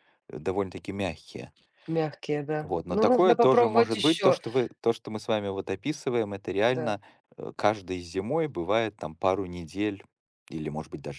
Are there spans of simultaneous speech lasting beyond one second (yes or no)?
yes